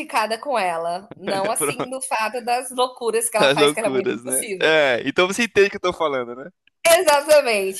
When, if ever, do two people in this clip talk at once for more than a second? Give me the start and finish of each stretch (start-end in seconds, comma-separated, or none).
3.4-4.7